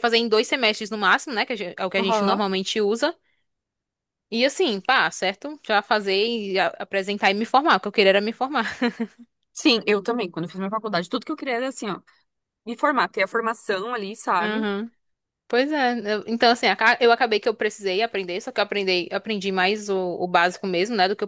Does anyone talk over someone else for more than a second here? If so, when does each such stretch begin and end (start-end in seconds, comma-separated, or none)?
none